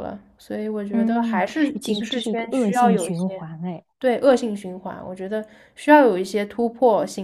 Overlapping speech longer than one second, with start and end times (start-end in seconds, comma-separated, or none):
0.9-3.5